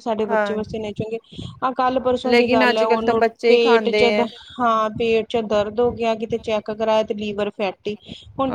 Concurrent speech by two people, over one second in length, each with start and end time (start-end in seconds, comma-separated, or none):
2.3-4.5